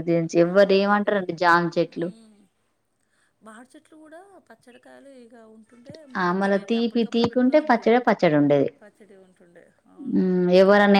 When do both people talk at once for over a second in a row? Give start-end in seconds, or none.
6.2-8.0